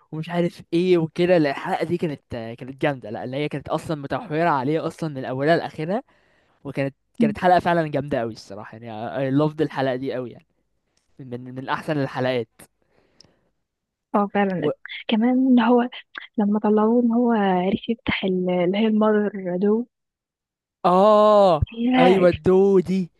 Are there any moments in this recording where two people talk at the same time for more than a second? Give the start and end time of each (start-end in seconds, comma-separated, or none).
none